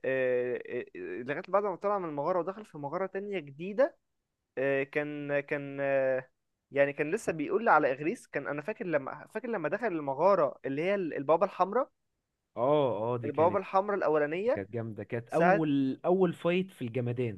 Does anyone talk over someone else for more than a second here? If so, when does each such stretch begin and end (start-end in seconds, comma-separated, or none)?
none